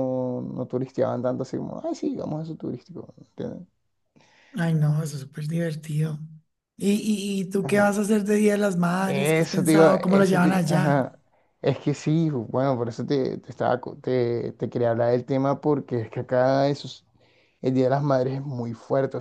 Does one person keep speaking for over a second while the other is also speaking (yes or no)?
yes